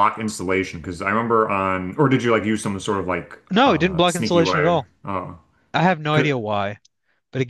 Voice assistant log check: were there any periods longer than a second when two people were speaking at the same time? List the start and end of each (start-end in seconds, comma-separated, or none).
3.5-4.9